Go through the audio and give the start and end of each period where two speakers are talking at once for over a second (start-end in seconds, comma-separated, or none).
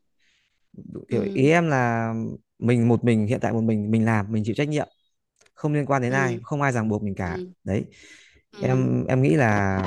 none